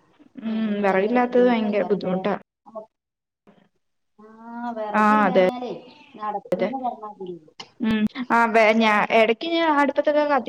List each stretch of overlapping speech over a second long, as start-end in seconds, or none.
0.6-2.1